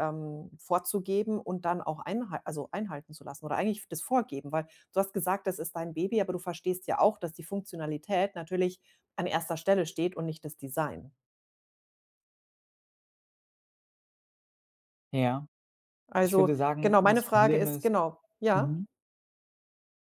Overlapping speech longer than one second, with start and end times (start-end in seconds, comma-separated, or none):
16.2-17.9